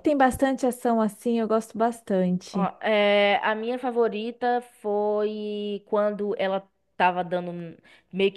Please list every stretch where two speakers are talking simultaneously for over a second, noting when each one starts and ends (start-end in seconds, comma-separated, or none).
none